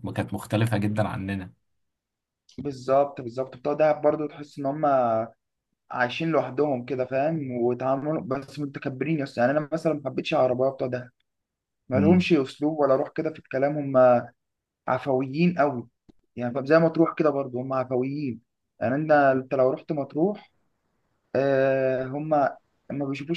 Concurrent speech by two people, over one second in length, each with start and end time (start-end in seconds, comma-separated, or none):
none